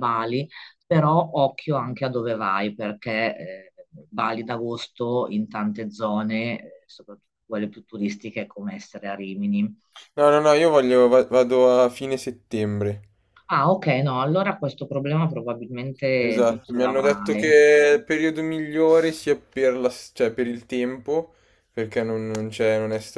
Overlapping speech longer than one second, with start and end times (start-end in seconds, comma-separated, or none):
16.2-17.6